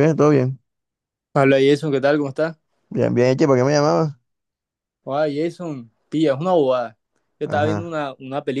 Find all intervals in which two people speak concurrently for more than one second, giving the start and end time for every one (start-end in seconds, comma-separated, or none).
none